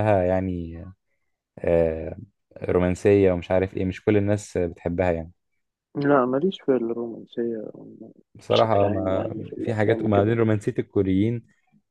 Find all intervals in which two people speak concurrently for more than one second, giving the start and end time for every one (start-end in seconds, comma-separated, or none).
8.5-10.4